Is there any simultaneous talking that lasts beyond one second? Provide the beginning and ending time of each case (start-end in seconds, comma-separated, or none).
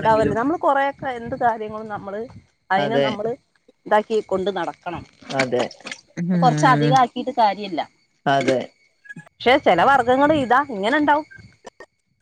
none